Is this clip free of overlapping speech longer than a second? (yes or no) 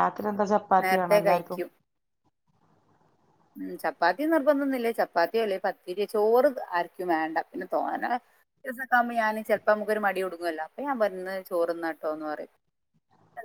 yes